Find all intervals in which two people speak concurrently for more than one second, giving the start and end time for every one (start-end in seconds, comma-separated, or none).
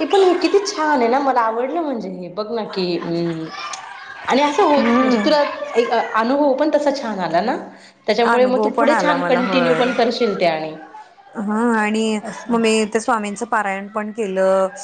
8.3-9.8